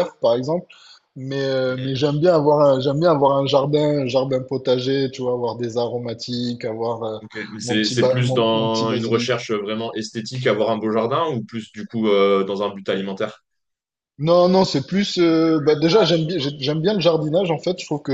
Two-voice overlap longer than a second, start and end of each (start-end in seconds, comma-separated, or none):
7.6-9.5